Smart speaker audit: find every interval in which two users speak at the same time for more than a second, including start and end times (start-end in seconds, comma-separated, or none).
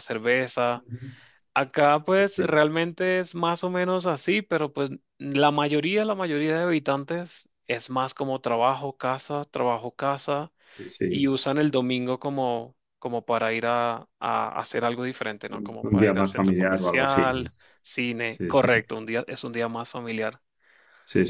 15.9-17.4